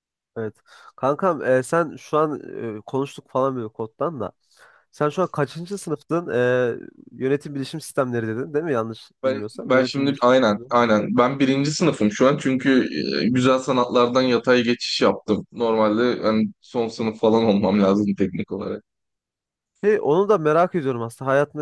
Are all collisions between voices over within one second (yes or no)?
no